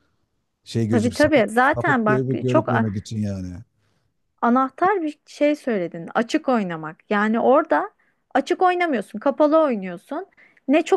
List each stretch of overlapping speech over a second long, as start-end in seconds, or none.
0.9-2.9